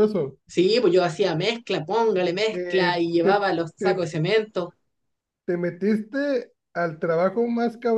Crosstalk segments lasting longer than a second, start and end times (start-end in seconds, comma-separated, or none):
2.5-4.0